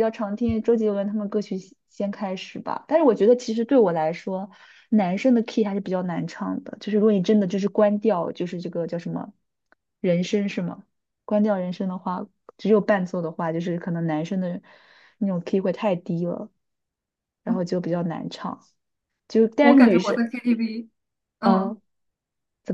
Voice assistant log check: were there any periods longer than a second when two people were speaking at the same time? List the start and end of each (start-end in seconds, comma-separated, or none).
none